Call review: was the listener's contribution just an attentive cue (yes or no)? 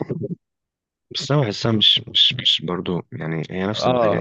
no